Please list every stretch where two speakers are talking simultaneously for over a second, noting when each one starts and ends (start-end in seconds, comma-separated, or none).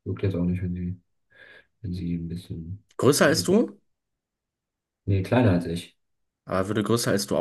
none